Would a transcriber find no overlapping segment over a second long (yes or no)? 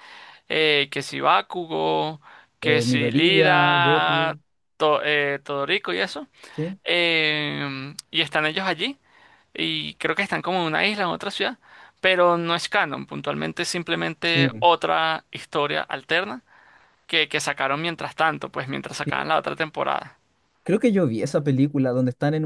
no